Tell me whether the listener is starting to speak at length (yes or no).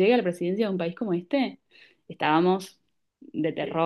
yes